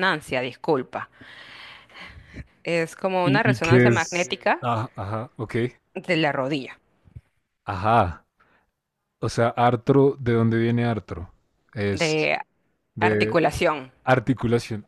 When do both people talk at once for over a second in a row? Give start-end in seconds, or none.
3.2-4.7